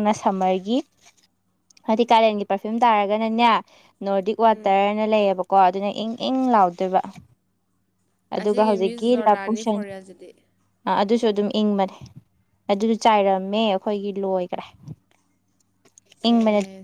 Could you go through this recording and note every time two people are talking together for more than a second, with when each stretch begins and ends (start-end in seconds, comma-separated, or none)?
8.4-9.8